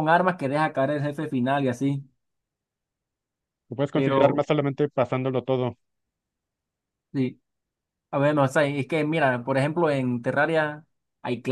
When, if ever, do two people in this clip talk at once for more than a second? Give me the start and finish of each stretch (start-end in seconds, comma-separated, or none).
none